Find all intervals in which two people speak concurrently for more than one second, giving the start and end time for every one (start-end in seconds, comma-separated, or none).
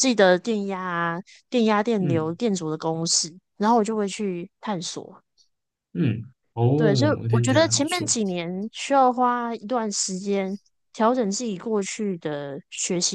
6.7-8.1